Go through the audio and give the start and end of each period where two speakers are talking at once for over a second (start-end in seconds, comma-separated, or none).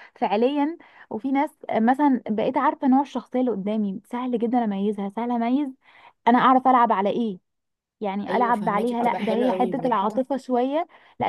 8.3-10.0